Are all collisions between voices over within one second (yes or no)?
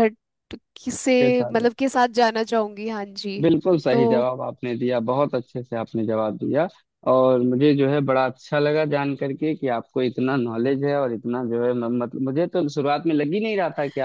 yes